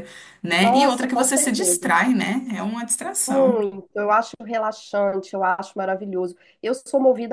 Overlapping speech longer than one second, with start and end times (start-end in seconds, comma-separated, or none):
0.6-1.9